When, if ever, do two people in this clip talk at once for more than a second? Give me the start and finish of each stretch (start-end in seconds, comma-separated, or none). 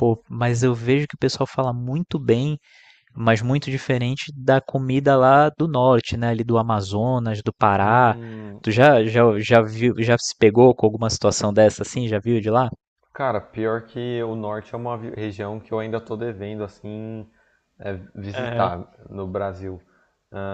none